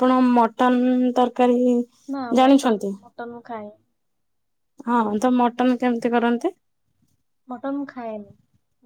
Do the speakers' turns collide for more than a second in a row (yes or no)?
no